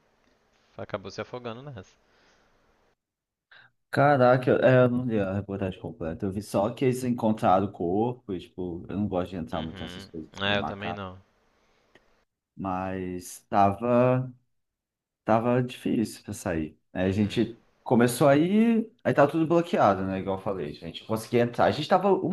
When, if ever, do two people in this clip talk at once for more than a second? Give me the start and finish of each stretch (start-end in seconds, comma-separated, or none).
9.5-11.0